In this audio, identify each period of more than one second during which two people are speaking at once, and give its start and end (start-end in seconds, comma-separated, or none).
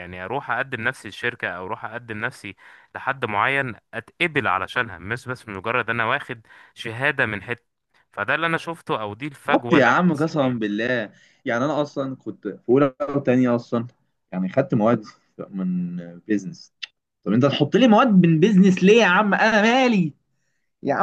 9.5-10.7